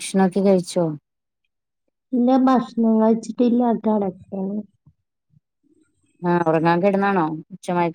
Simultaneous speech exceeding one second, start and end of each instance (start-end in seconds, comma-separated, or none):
none